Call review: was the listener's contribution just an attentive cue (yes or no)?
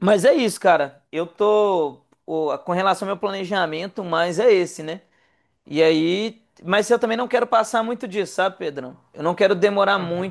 yes